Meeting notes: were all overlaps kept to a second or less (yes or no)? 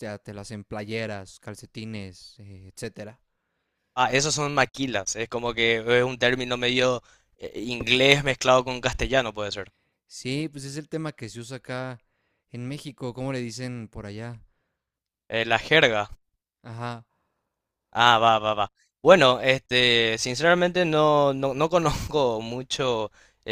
yes